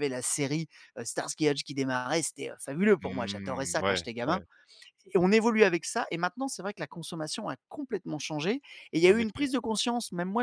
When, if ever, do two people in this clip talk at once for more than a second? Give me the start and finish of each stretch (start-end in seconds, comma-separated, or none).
3.0-4.4